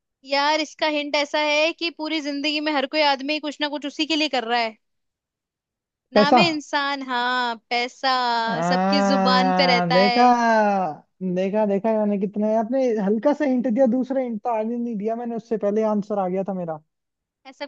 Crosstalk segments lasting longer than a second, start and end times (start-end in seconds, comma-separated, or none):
8.7-10.2